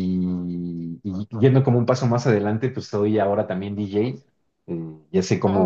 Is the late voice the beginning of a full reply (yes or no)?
no